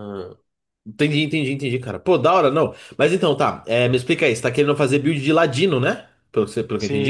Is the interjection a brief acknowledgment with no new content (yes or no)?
no